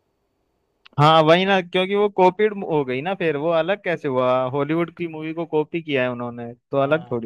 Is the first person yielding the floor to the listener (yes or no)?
yes